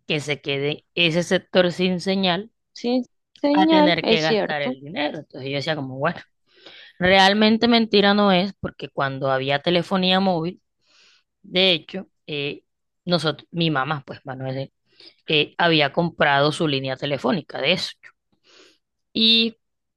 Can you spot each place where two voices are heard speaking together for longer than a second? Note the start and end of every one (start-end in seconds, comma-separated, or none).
3.5-4.8